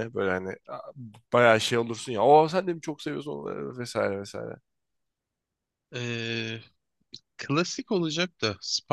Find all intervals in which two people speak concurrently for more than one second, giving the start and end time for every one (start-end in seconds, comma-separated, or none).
none